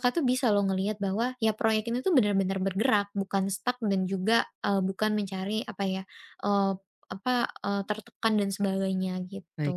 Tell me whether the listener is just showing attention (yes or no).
no